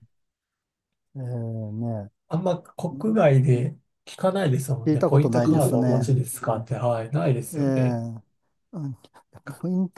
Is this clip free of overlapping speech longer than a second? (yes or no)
no